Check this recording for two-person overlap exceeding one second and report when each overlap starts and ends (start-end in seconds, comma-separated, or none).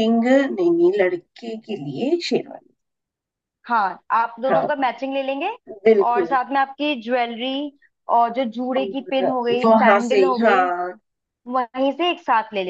8.8-10.7